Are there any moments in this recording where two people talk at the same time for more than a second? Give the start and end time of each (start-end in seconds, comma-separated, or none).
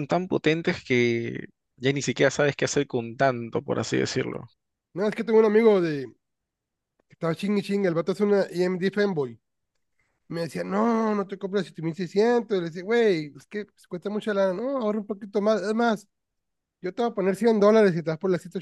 none